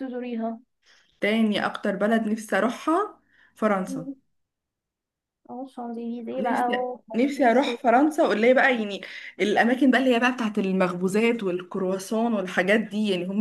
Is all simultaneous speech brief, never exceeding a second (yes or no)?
no